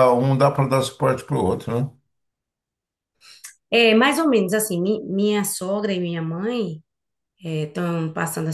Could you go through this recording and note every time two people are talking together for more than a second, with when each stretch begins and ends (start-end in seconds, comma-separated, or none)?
none